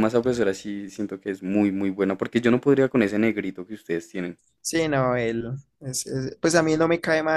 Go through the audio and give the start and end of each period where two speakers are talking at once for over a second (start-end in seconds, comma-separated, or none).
none